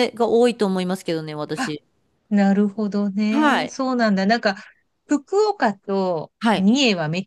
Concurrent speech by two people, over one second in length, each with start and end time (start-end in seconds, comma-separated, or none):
none